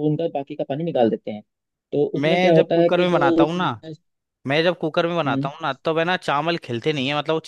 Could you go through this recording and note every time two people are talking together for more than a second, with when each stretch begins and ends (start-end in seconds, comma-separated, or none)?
2.2-3.7